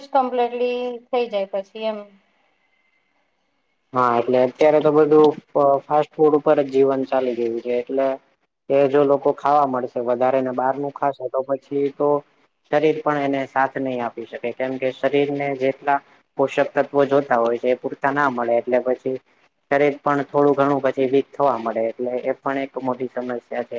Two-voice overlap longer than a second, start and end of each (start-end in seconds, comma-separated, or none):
none